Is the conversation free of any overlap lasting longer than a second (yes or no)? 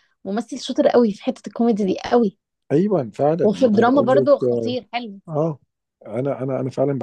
no